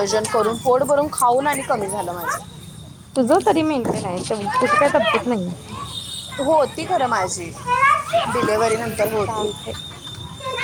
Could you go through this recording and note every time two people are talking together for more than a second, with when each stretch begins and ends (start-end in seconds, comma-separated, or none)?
none